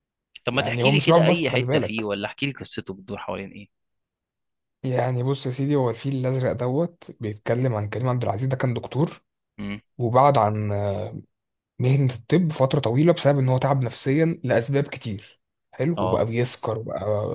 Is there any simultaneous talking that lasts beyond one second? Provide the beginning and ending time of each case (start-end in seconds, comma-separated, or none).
0.5-2.1